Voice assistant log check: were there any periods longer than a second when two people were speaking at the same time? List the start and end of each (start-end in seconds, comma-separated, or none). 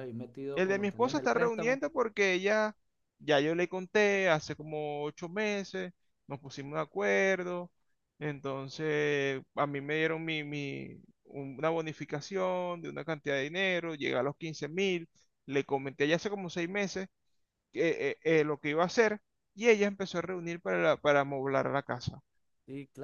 0.6-1.8